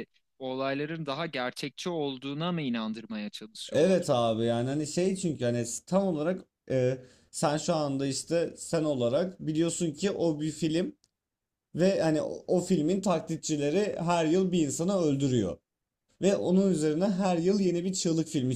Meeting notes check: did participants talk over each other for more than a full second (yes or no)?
no